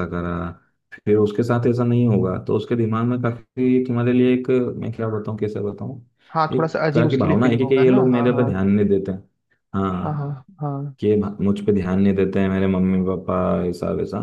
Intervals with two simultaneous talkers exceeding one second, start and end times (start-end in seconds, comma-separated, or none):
6.5-8.5